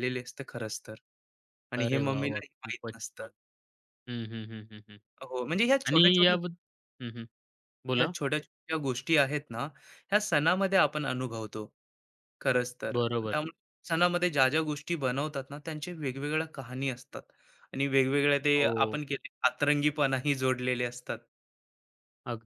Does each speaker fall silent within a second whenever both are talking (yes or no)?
no